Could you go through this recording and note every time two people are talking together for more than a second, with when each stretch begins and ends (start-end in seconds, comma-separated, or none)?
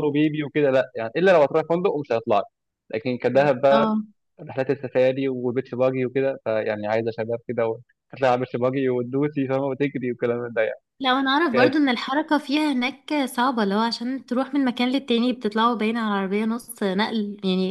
none